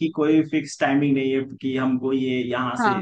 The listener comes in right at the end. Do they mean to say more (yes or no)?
no